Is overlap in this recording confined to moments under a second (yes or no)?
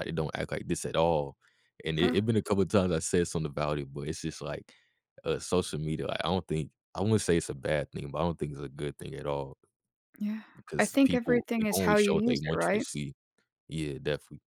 no